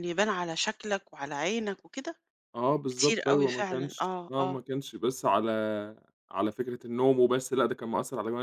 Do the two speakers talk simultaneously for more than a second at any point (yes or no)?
yes